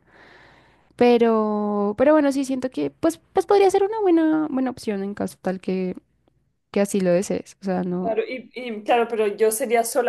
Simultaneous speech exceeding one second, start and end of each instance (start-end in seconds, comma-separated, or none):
none